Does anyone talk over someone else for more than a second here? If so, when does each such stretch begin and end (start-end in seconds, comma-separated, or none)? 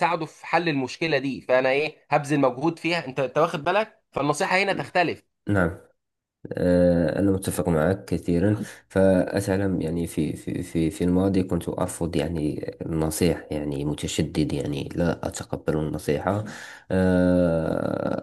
none